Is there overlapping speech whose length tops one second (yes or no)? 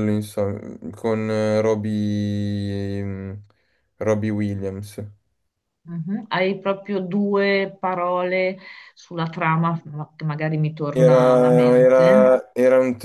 yes